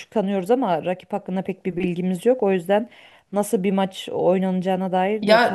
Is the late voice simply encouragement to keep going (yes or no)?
no